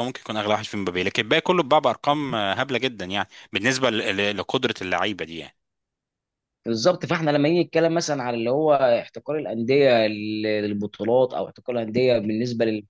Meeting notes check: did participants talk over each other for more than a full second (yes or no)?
no